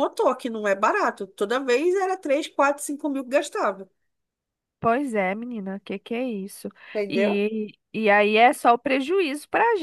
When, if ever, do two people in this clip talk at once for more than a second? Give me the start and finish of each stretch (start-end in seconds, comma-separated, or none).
none